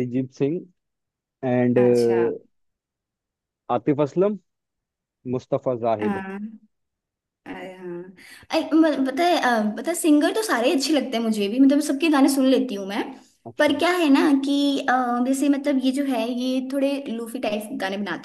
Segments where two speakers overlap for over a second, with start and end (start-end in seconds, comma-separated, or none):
none